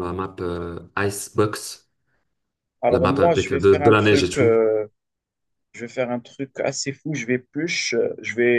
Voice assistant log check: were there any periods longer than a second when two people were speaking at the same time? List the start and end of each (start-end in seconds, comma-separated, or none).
2.9-4.5